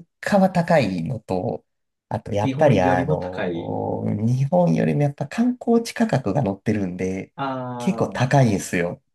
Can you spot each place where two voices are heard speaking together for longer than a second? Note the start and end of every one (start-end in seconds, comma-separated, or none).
2.4-3.8